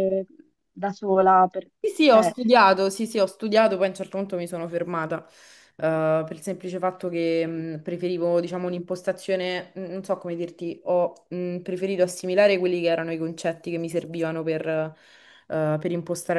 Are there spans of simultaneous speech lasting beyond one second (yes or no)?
no